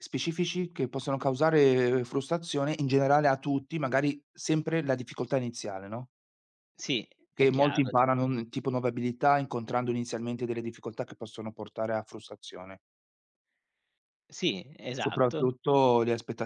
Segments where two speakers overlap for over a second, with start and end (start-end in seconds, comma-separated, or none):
none